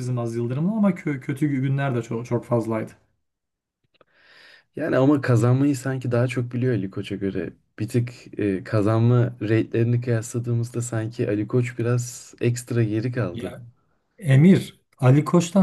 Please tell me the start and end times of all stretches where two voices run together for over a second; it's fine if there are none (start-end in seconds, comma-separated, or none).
none